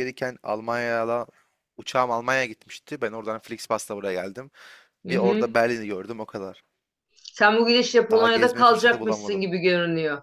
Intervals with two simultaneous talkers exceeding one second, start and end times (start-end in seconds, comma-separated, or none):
8.1-9.5